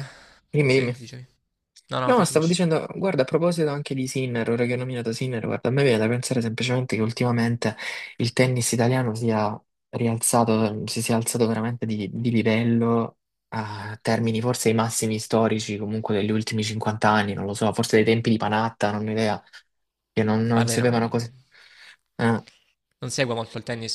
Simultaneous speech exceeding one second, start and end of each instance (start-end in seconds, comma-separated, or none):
none